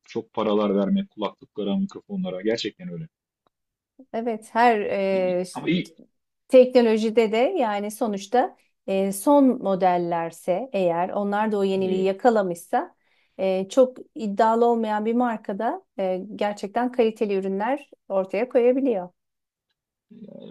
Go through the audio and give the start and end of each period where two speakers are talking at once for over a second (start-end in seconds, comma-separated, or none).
none